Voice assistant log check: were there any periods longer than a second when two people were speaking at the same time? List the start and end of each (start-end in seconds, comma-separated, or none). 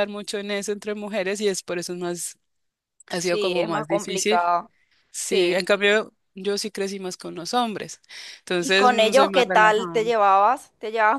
3.2-4.4, 8.6-10.0